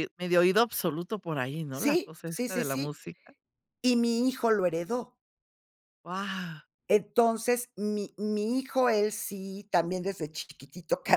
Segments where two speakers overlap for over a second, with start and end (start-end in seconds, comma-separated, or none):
1.7-2.9